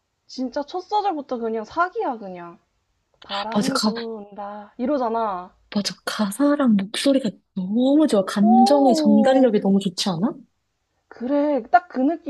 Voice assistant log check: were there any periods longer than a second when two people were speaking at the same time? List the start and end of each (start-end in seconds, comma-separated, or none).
8.4-9.6